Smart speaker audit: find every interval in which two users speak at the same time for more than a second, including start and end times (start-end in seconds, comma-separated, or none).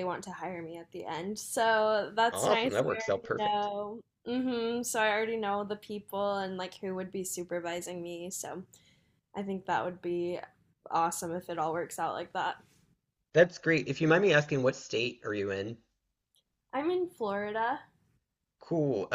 2.3-3.7